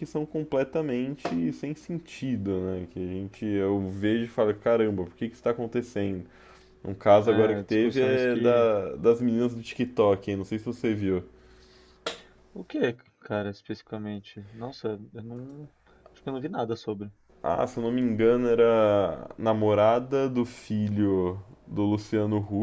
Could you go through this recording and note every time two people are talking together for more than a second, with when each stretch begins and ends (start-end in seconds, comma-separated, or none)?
7.2-8.7